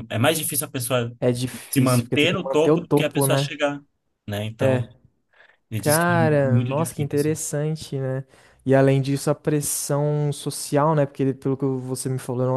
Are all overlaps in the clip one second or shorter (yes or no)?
no